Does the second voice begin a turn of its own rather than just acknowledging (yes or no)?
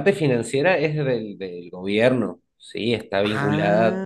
no